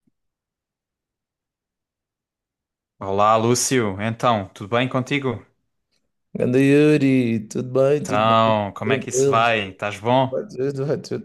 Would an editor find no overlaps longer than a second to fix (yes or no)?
no